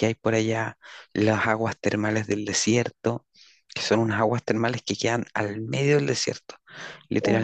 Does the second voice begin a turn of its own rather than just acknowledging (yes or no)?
yes